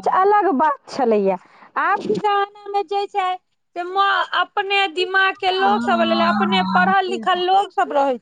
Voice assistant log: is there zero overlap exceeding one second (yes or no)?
no